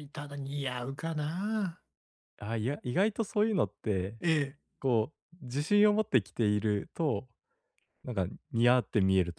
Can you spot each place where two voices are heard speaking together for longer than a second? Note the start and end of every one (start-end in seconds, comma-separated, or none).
none